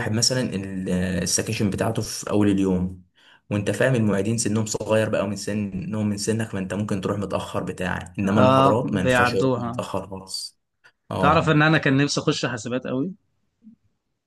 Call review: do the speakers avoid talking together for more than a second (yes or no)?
no